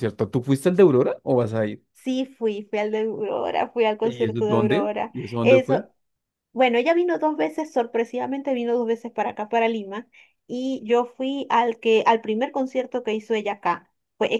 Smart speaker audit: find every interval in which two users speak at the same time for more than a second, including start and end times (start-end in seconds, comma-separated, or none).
4.0-5.8